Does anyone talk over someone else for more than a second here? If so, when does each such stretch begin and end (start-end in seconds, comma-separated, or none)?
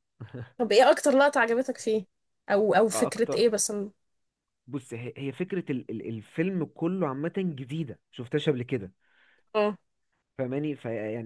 none